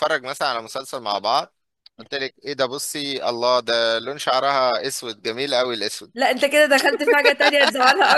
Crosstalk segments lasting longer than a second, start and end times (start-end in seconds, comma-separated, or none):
none